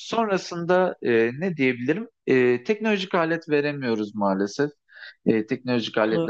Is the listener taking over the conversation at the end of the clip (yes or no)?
no